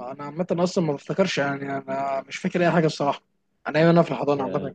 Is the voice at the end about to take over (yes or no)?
no